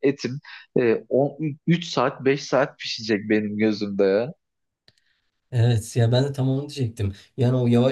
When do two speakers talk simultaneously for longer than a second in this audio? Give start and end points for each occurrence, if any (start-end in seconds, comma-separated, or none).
none